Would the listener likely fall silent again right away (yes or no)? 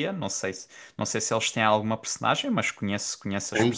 no